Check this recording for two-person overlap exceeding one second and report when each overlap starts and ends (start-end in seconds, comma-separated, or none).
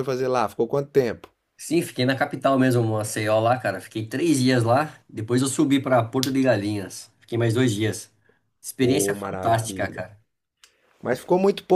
8.8-10.1